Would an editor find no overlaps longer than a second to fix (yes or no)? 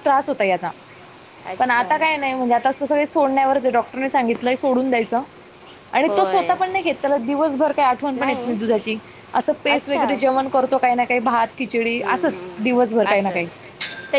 yes